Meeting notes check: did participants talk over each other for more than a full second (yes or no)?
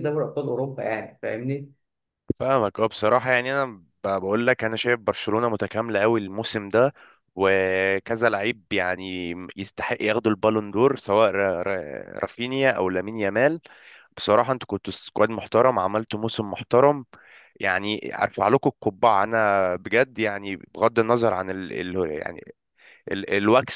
no